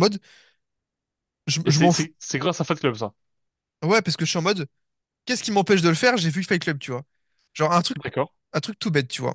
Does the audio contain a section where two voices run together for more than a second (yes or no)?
no